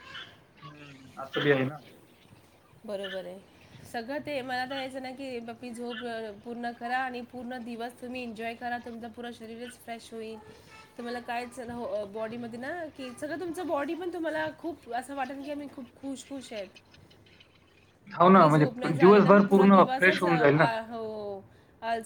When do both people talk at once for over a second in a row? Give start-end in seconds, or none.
18.2-20.2